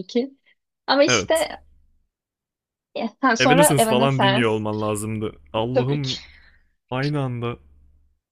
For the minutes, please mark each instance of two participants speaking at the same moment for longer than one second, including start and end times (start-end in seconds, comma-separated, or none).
3.4-4.6